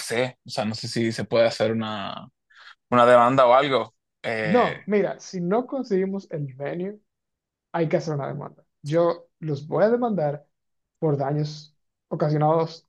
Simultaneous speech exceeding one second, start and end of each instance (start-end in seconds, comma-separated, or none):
none